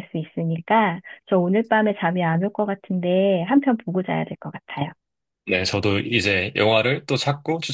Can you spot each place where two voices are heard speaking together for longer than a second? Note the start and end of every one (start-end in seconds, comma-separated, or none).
none